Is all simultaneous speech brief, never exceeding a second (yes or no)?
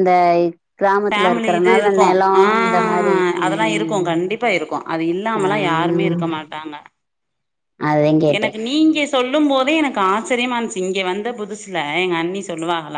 no